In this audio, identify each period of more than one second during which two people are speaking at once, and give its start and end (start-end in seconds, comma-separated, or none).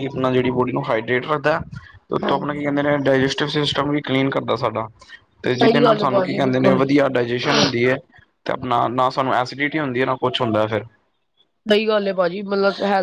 5.6-6.8